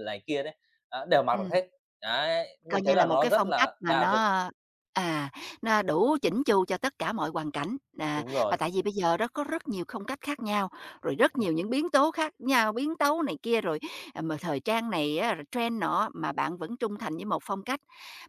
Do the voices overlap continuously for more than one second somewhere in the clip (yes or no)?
yes